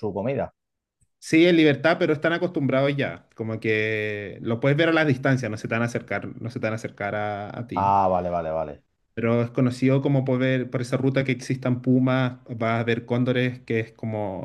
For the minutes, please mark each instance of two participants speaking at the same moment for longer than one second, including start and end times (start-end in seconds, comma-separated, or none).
none